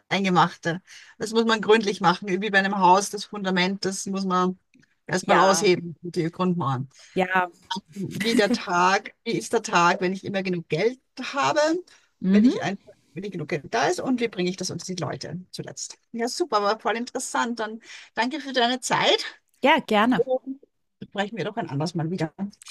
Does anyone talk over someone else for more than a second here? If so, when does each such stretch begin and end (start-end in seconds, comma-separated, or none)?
none